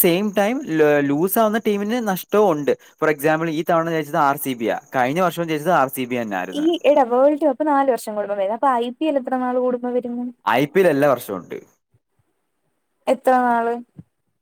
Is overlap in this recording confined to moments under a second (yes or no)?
yes